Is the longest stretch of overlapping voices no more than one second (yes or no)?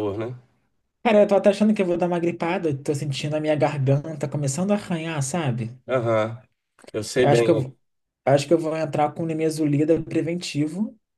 yes